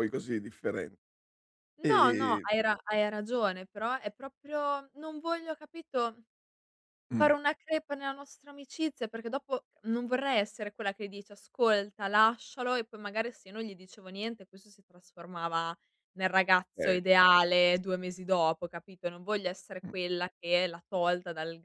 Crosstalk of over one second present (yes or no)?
no